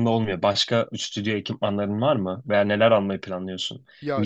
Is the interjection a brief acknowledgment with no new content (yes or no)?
yes